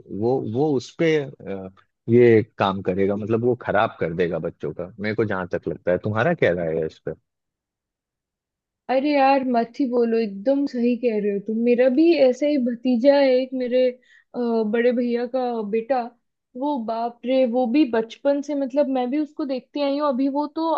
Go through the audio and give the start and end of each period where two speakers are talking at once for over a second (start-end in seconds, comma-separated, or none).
none